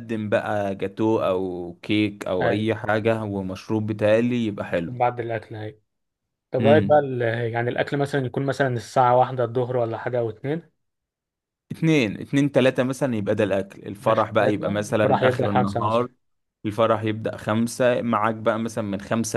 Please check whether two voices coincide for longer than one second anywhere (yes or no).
yes